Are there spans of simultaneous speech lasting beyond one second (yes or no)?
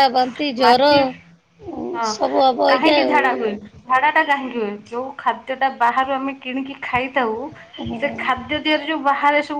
no